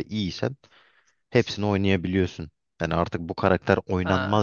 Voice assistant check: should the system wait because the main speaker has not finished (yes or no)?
yes